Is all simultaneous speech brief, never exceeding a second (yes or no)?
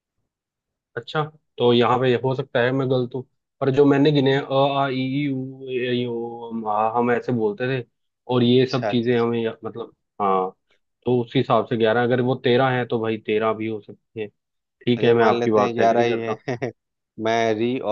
no